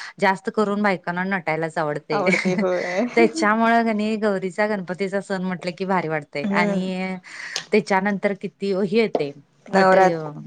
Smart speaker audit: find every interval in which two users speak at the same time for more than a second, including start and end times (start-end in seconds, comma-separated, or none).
none